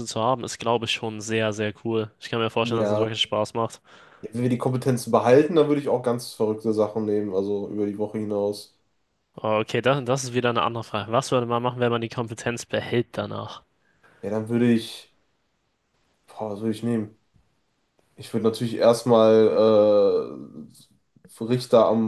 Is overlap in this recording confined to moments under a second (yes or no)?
yes